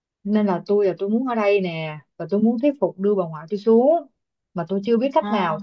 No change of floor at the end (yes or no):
yes